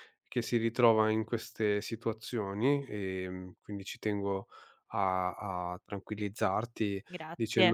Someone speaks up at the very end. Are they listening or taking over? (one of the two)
listening